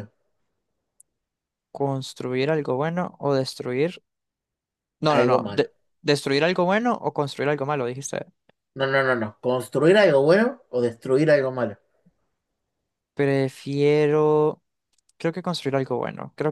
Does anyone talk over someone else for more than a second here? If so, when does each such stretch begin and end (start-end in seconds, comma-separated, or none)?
none